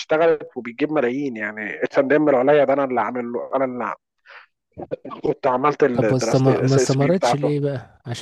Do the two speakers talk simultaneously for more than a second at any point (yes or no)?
yes